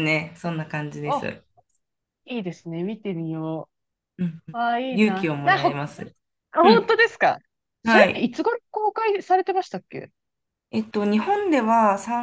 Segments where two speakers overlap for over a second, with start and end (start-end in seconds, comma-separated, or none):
4.5-6.0